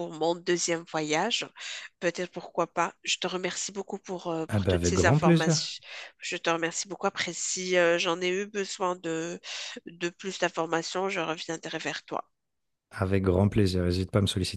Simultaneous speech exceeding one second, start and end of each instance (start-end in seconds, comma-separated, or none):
4.5-5.7